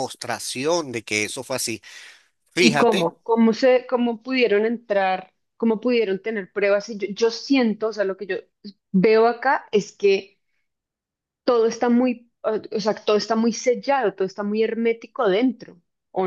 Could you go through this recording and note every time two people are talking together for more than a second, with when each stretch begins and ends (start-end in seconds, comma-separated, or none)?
none